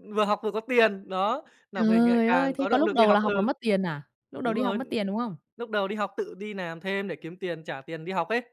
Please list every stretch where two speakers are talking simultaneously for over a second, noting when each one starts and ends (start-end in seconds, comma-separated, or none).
1.8-3.5